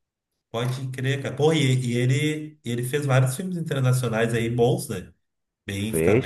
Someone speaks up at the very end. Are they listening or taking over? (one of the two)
taking over